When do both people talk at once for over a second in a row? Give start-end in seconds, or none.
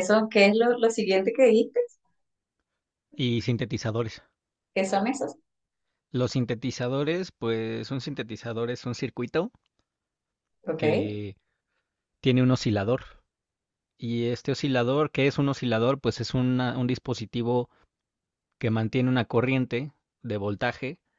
none